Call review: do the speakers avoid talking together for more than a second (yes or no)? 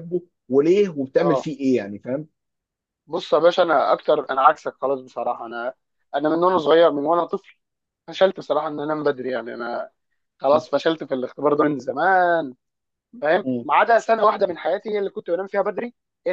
yes